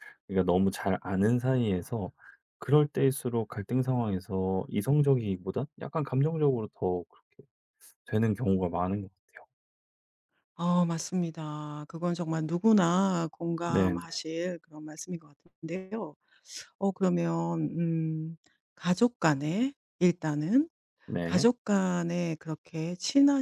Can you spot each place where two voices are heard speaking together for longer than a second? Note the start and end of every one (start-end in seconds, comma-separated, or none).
none